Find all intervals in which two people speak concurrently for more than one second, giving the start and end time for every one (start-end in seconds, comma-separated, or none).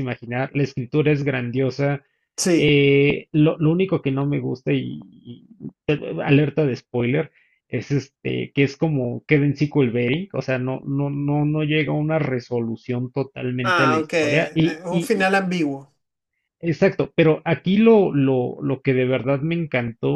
13.6-15.3